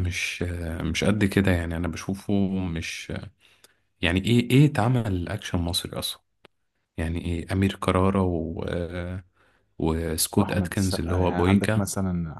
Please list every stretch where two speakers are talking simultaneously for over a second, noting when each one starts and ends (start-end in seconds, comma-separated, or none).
10.4-11.9